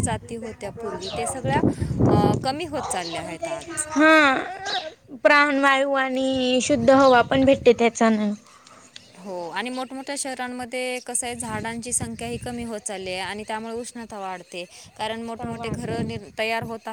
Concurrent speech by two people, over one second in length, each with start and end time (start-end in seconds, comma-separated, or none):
none